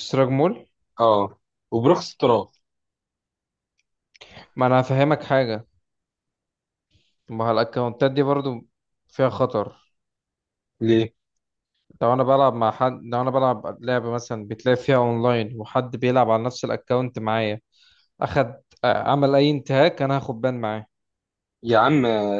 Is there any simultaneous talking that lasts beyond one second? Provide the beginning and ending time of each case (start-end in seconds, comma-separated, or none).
none